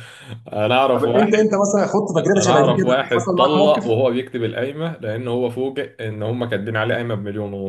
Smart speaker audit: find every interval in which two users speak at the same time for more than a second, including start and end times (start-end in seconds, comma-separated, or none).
2.2-3.8